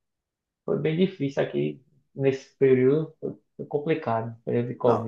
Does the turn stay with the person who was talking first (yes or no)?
no